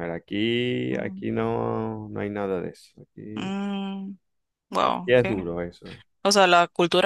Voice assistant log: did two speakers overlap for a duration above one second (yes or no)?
no